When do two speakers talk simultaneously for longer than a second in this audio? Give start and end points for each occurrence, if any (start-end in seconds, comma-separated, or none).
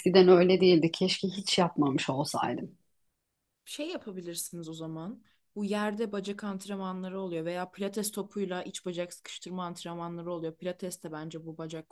none